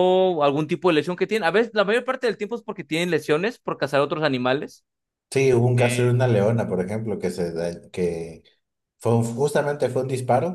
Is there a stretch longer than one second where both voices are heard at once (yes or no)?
no